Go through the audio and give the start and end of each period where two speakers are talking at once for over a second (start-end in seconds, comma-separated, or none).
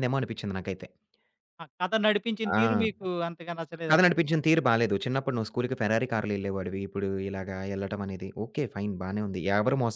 none